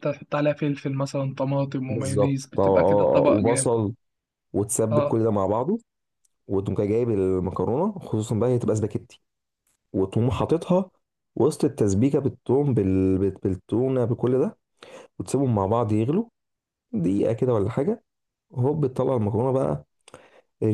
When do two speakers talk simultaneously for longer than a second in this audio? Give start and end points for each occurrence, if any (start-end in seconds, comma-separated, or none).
1.9-3.7